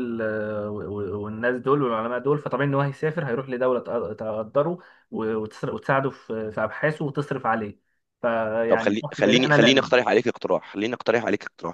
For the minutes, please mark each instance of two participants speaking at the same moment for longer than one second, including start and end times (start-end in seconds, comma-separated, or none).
8.7-9.9